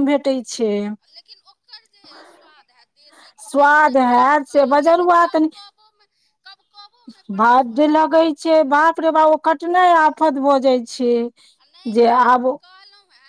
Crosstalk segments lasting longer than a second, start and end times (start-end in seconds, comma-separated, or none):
3.5-5.5